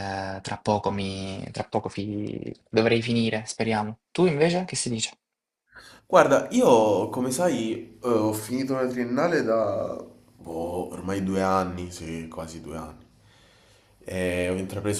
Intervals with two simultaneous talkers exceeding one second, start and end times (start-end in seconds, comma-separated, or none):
none